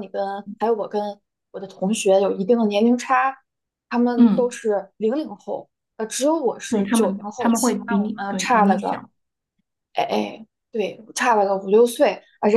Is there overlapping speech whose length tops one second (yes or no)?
yes